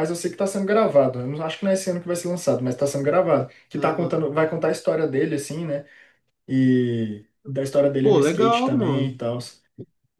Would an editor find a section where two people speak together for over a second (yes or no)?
yes